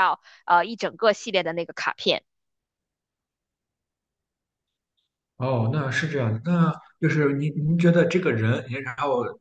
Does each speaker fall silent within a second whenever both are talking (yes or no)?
yes